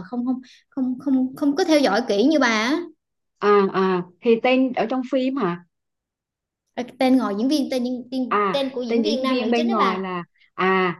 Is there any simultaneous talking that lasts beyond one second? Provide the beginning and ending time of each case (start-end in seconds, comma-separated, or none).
8.3-10.1